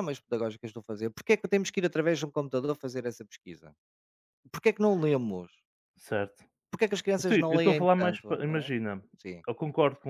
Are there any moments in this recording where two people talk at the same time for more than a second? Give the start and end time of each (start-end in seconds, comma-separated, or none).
7.3-8.7